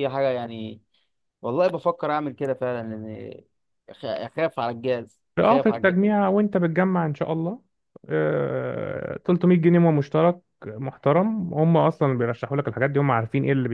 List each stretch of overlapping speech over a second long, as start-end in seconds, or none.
none